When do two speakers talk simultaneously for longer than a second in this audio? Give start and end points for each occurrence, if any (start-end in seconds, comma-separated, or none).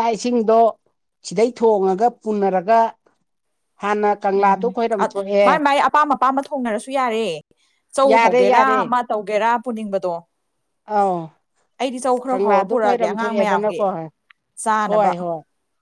12.3-13.8